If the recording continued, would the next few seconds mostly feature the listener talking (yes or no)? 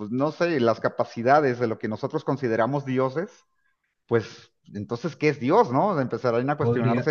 yes